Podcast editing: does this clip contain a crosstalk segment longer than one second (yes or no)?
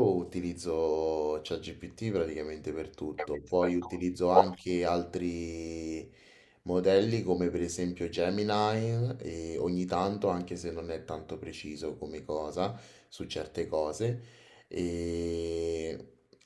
yes